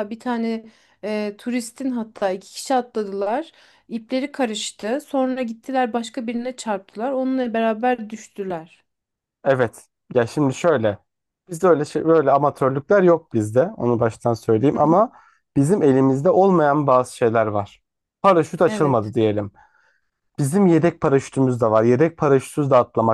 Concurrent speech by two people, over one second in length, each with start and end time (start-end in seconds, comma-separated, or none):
none